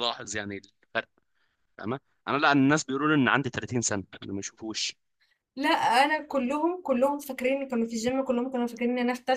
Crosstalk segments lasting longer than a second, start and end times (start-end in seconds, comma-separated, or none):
none